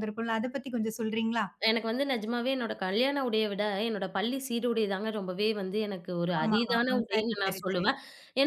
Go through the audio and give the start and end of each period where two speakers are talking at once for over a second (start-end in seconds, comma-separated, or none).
6.4-7.9